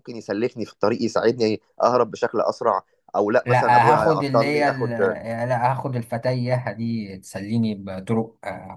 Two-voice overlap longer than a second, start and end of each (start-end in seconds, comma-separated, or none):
3.4-4.9